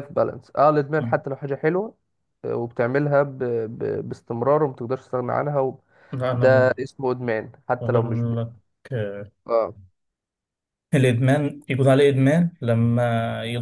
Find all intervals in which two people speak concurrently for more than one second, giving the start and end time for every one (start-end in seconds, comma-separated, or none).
none